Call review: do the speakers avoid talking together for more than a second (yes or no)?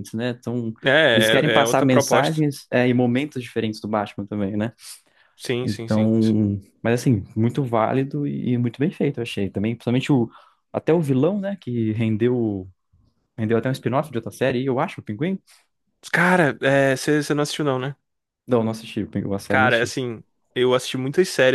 no